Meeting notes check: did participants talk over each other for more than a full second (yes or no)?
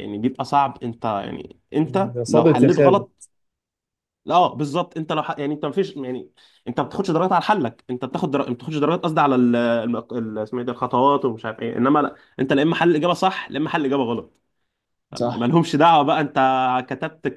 yes